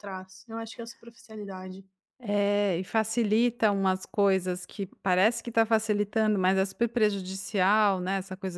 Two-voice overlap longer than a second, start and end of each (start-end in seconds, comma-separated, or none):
none